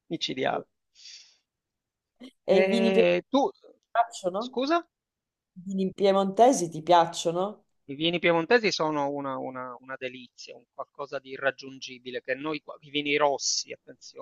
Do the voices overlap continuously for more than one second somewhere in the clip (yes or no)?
no